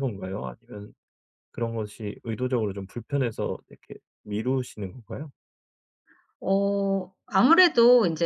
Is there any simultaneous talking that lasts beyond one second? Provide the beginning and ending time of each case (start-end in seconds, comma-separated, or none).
none